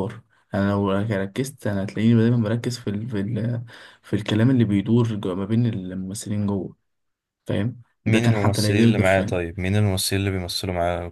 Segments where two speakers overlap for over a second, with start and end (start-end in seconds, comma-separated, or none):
8.1-9.4